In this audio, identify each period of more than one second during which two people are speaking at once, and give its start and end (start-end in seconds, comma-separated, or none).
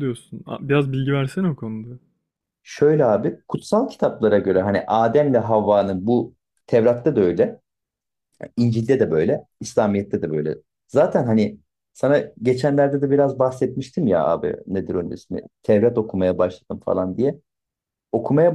none